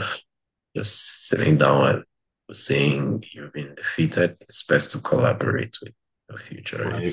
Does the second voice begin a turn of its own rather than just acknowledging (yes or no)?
yes